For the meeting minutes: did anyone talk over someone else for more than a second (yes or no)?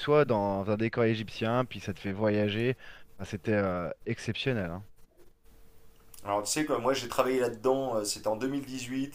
no